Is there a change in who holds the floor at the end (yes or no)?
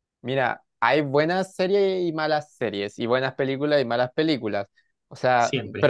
no